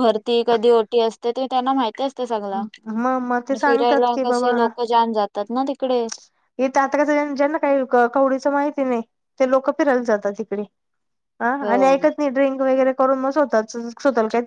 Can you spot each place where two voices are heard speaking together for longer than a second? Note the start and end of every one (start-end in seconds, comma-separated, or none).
2.5-4.2